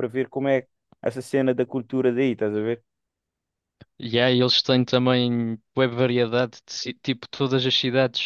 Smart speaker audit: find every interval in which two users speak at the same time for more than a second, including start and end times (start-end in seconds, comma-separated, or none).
none